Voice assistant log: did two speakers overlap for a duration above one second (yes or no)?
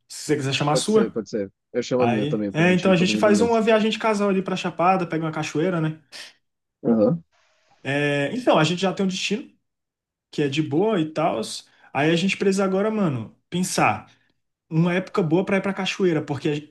yes